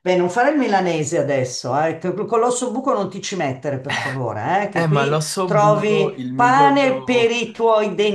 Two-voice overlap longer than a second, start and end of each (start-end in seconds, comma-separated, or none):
4.7-7.4